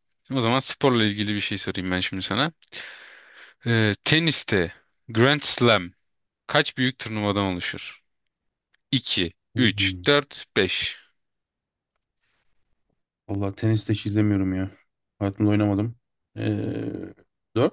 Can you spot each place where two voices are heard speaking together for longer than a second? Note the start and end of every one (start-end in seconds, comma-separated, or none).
none